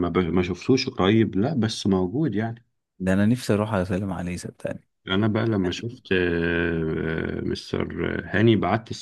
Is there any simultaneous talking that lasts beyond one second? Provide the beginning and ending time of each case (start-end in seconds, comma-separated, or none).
none